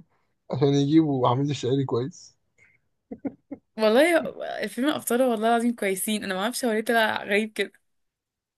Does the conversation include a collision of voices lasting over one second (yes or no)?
no